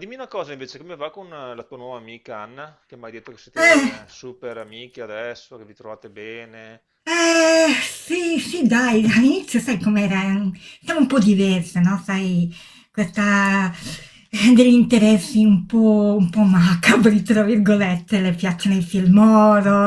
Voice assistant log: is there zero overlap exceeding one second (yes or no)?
yes